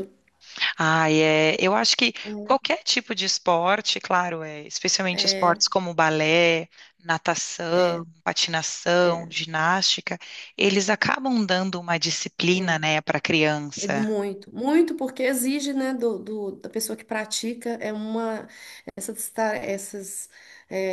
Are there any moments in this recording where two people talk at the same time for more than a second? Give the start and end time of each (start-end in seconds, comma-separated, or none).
none